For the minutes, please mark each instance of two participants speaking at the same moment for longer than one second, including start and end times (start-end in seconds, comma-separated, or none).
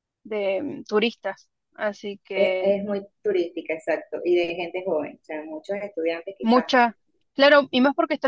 none